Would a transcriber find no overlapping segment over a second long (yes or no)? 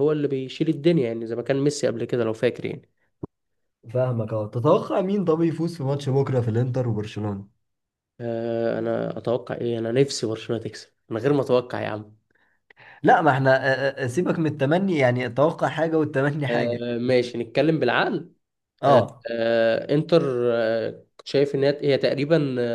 yes